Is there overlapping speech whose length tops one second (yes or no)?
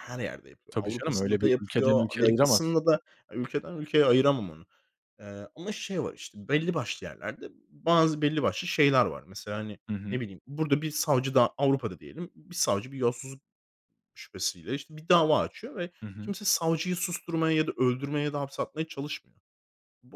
yes